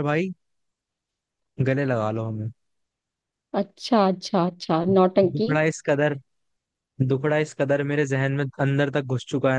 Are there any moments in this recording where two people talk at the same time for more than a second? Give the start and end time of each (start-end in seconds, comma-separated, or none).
none